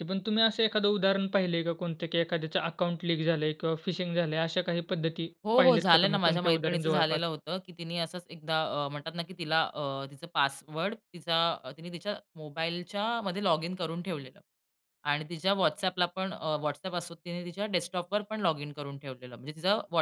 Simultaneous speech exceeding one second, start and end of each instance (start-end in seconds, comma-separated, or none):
5.5-7.2